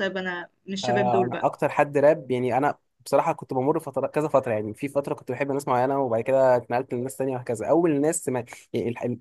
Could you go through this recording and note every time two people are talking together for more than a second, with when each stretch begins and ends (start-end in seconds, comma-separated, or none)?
none